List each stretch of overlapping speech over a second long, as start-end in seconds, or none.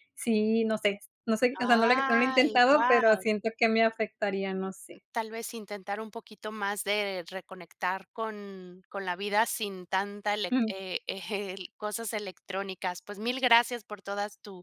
1.6-3.3